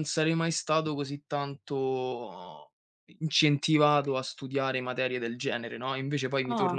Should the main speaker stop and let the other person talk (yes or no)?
yes